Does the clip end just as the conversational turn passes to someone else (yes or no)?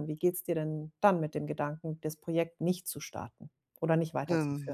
yes